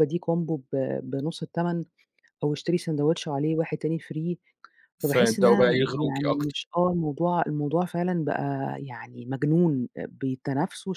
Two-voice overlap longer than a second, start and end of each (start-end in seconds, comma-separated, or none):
5.0-6.6